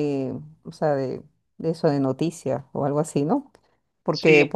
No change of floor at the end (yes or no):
yes